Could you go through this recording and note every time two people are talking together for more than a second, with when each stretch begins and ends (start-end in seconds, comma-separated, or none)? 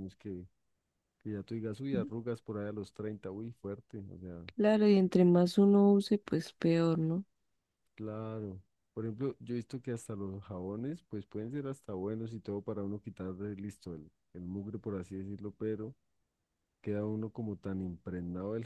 none